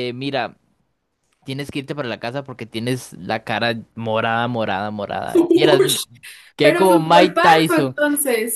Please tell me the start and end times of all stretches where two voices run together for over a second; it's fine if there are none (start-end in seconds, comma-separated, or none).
6.6-8.0